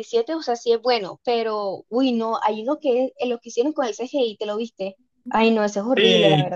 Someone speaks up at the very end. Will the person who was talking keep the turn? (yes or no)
no